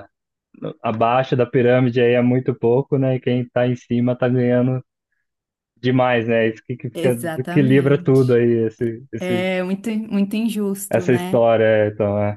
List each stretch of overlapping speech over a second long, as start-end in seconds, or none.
6.9-8.4